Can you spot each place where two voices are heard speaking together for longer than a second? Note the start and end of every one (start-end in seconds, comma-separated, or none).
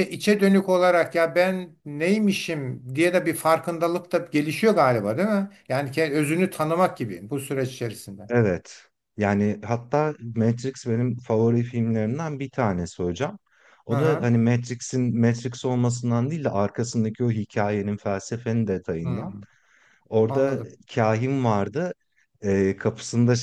none